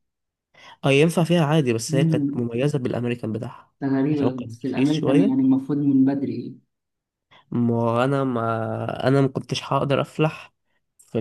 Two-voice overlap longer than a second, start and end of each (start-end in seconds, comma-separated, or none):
4.1-5.5